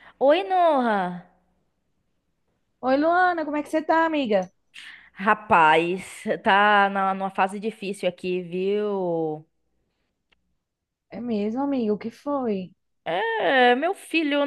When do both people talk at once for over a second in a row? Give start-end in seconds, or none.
none